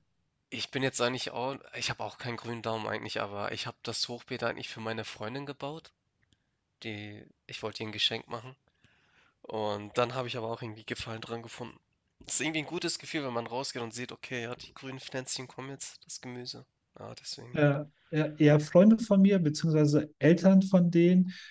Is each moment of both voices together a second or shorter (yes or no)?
yes